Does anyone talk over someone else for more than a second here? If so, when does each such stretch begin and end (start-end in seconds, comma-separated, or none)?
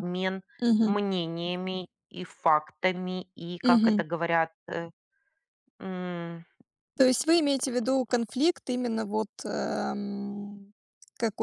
none